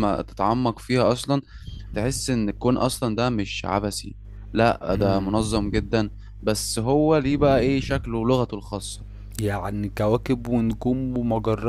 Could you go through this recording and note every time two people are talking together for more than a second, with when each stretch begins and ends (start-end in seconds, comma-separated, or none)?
none